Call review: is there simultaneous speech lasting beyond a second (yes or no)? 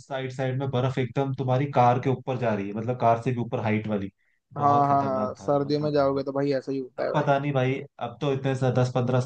yes